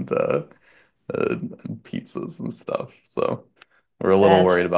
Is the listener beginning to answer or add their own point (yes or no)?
no